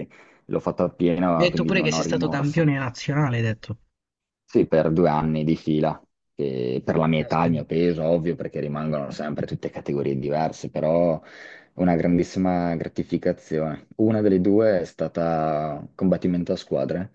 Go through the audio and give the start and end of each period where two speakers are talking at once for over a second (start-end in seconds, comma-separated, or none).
1.4-2.7